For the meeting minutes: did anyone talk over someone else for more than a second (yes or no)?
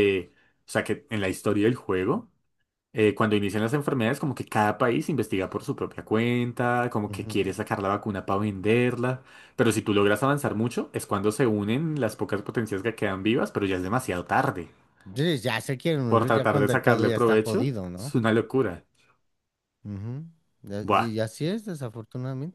yes